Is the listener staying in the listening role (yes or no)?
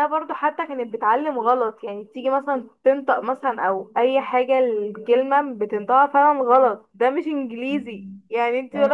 yes